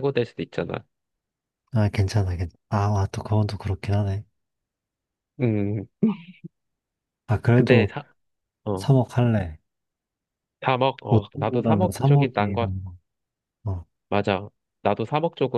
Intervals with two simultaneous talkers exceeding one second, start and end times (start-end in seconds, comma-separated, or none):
11.1-12.7